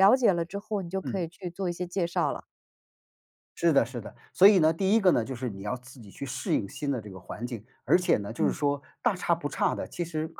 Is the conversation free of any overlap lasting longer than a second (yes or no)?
yes